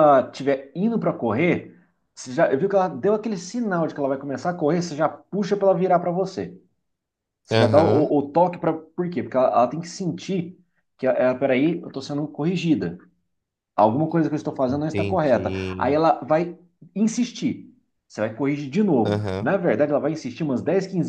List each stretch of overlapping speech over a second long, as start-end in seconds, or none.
14.7-16.0